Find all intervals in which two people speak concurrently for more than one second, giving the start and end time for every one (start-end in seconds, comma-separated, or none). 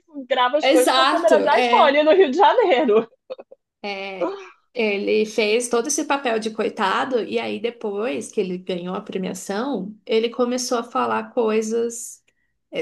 0.6-2.0